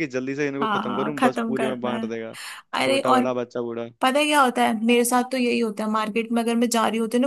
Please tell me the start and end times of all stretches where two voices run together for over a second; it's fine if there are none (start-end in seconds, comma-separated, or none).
0.6-2.1